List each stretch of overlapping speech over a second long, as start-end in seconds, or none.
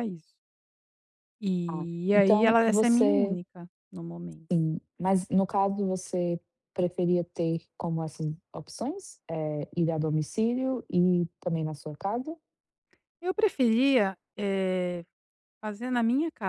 1.7-3.4